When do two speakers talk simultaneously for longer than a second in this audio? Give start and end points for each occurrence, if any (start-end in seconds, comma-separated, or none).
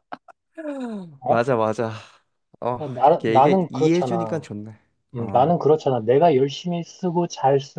3.2-4.5